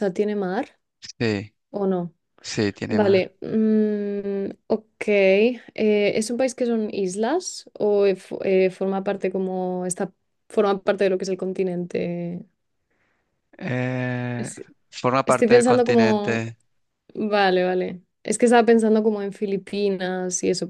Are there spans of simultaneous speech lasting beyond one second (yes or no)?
yes